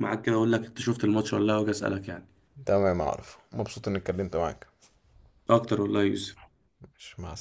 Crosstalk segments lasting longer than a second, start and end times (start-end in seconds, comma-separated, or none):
none